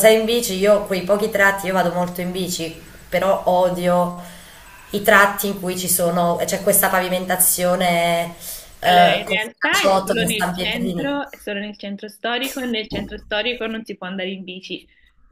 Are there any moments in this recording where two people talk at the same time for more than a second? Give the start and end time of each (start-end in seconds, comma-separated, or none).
8.8-11.1